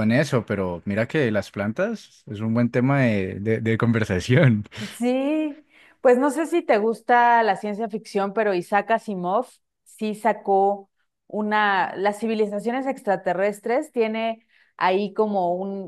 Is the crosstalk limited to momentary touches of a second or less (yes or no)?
yes